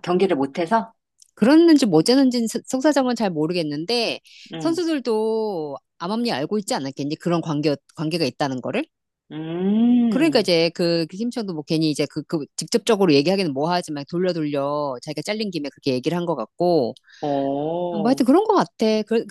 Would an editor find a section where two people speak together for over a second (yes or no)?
no